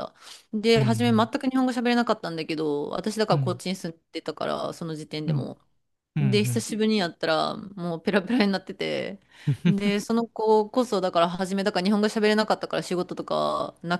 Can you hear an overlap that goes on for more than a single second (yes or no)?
no